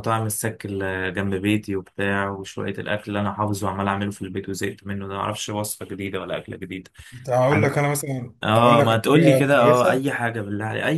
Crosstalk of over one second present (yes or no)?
yes